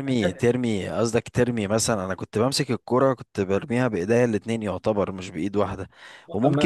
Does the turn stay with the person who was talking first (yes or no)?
yes